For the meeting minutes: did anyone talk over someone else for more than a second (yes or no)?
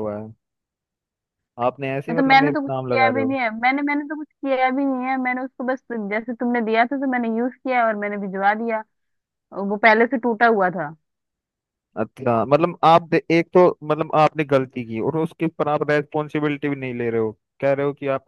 yes